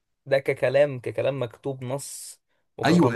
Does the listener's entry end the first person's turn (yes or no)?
yes